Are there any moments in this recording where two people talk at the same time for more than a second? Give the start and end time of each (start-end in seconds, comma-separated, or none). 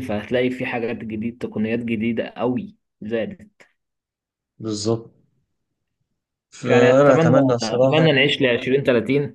6.7-8.1